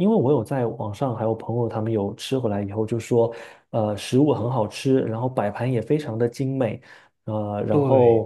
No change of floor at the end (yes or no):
yes